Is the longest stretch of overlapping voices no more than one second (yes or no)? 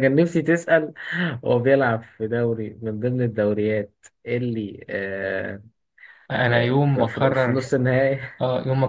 no